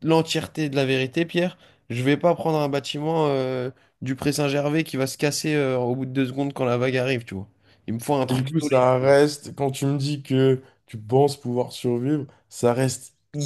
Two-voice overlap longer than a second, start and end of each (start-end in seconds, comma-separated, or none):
none